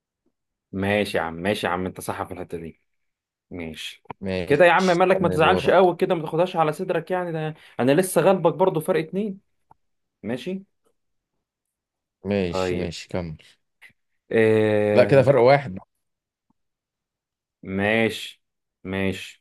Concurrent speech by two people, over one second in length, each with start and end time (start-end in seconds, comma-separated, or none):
4.5-5.9